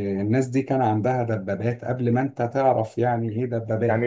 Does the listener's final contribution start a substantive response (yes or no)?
yes